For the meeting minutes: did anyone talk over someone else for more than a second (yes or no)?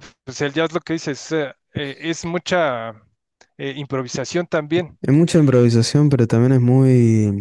no